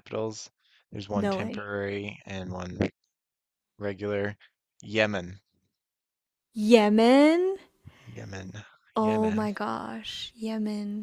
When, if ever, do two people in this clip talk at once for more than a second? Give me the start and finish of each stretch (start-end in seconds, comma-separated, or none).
none